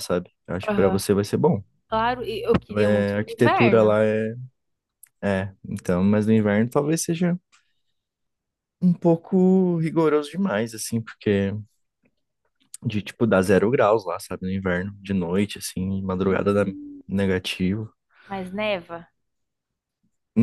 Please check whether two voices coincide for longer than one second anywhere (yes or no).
yes